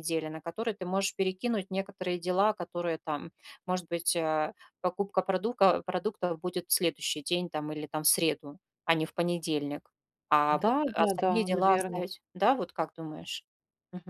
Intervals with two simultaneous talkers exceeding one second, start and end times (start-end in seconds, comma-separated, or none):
10.5-12.1